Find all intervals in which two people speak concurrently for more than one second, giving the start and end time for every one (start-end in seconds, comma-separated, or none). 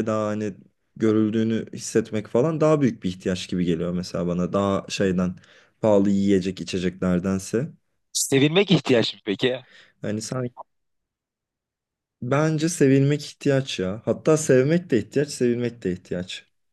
none